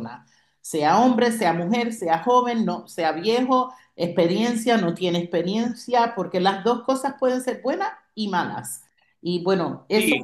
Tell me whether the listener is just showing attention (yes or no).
no